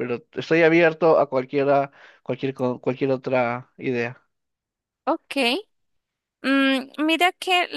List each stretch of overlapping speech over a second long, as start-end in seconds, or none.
none